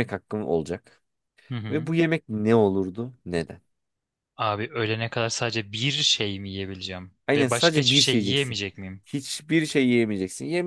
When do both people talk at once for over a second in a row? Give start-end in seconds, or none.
7.3-8.6